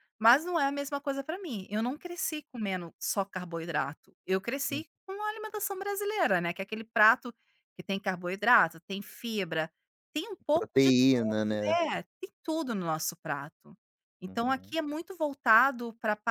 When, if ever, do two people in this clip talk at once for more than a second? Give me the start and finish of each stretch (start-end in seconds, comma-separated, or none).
10.5-11.8